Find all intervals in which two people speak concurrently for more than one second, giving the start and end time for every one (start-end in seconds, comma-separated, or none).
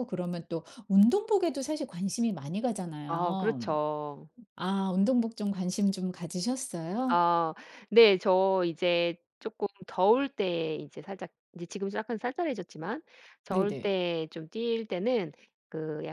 none